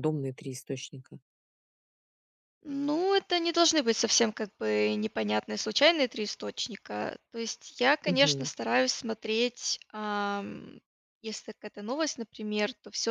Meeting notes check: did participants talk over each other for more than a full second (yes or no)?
no